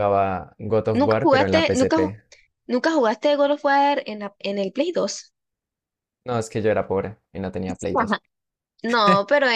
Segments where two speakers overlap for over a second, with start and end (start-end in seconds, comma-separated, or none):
0.9-2.1